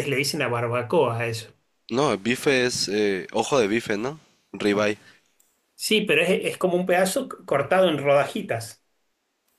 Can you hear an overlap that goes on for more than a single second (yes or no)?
no